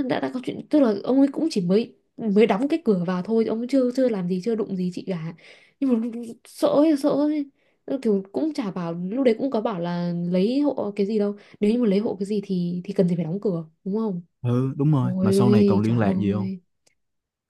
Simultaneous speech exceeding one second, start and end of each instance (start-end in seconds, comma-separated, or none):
15.0-16.5